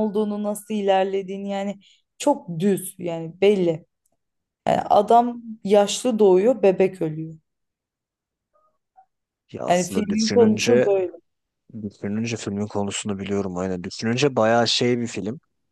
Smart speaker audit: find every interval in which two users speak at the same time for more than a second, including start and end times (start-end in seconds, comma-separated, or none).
9.7-10.9